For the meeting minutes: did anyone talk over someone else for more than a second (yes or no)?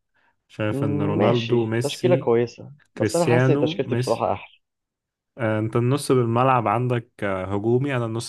yes